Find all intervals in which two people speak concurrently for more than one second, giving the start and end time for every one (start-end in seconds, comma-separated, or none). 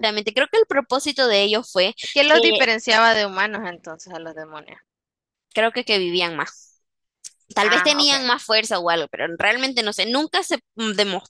none